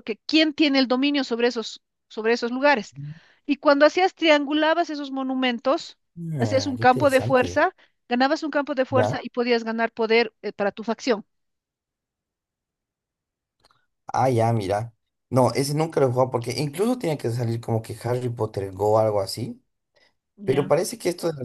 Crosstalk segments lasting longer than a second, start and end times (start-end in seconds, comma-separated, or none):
6.4-7.7